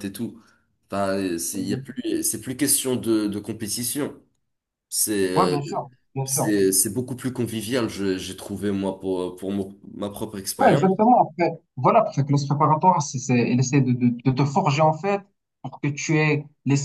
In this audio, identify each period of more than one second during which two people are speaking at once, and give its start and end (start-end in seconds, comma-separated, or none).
none